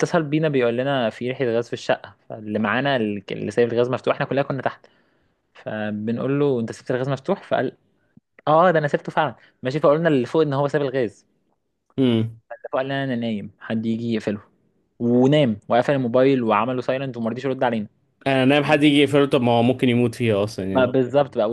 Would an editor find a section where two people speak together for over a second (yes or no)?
no